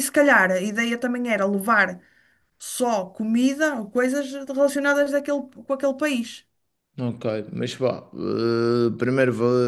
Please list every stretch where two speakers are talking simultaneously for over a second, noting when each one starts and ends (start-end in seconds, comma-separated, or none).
none